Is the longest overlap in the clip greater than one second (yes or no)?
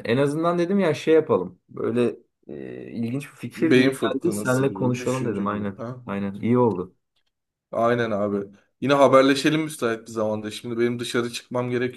yes